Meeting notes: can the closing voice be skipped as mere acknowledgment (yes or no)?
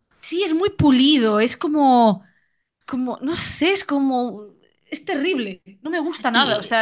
yes